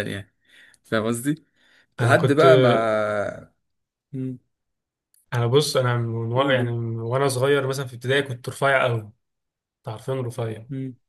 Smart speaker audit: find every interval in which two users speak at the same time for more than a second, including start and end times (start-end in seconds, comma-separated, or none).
none